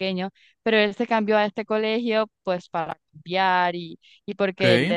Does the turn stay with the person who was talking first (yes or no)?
yes